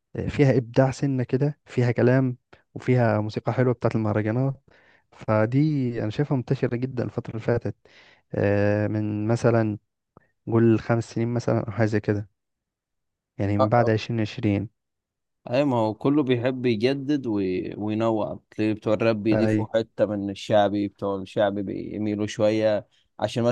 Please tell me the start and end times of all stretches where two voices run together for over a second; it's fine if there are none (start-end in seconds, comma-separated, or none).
none